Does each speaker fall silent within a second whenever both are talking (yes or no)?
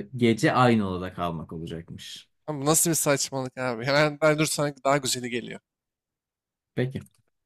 yes